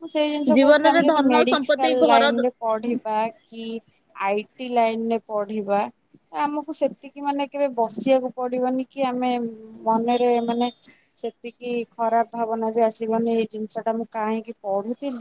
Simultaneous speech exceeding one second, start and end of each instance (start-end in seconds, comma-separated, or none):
0.6-2.4